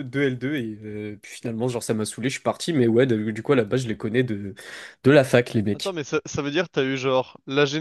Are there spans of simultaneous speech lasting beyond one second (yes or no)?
no